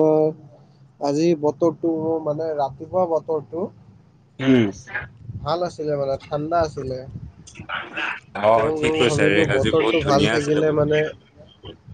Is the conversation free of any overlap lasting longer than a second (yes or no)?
no